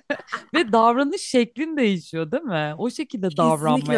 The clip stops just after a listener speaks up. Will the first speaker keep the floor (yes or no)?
no